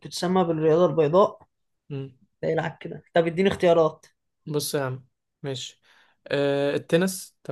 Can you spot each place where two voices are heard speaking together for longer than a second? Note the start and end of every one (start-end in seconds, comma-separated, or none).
none